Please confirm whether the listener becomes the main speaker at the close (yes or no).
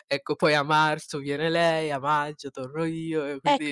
yes